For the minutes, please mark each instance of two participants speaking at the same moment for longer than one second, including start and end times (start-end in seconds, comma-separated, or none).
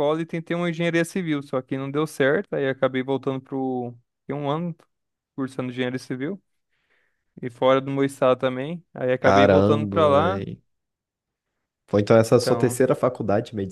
9.2-10.4